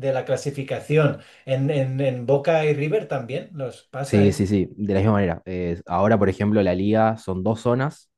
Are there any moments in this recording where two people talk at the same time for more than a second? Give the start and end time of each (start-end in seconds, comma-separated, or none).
none